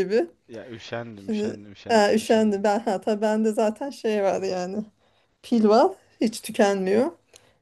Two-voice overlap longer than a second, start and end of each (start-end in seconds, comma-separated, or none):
1.1-2.6